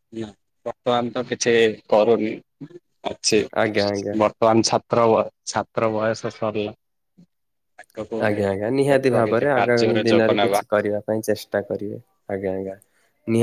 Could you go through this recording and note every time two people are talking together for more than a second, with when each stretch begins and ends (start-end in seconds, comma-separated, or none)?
8.9-10.6